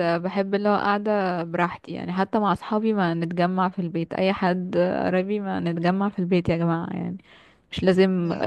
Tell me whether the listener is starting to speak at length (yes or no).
no